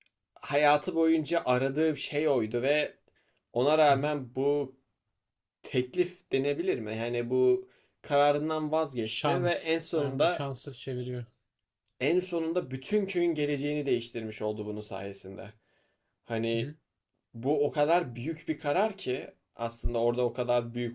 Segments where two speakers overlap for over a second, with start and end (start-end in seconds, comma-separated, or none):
9.0-10.5